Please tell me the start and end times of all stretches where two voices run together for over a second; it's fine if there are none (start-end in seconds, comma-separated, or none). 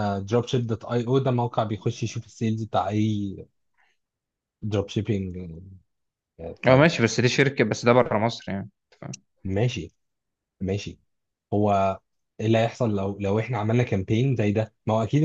none